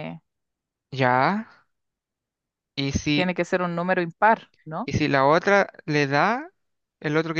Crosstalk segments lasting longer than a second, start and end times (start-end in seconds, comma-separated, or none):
none